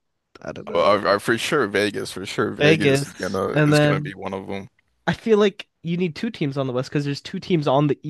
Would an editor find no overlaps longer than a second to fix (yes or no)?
no